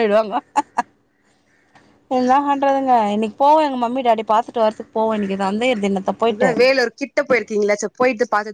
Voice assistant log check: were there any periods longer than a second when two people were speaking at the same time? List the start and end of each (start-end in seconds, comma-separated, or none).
none